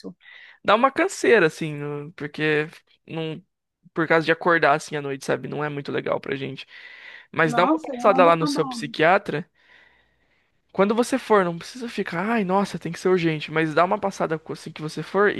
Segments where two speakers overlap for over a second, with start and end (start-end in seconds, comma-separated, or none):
7.4-8.9